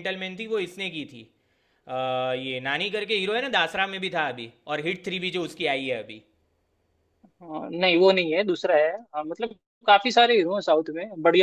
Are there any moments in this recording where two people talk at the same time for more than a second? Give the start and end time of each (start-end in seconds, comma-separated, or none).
none